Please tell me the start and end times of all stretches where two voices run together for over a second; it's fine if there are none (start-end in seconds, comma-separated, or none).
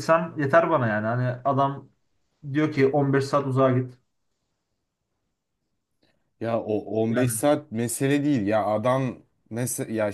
none